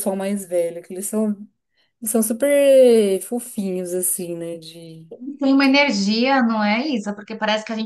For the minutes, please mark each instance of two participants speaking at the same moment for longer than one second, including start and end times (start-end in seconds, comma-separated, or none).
none